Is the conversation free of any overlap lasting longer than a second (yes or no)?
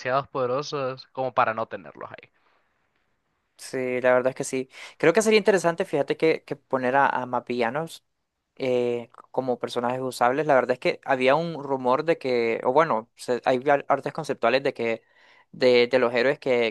yes